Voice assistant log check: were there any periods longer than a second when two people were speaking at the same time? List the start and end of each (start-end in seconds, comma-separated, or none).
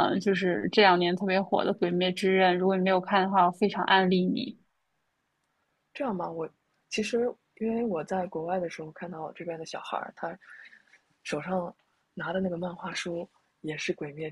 none